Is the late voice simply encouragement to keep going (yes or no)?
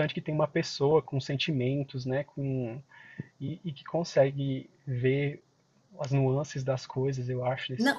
no